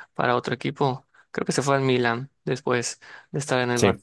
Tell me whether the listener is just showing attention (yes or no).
yes